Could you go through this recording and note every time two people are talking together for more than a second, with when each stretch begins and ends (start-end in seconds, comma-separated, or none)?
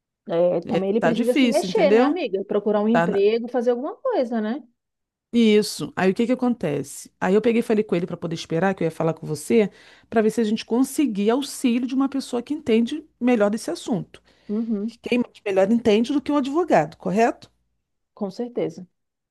0.7-2.2